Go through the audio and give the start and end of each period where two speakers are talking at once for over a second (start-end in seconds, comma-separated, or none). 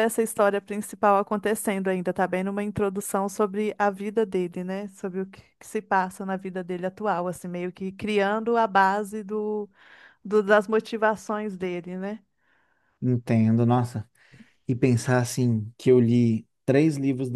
none